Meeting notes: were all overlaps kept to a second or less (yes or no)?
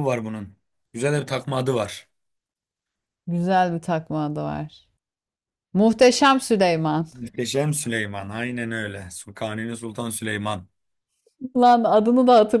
yes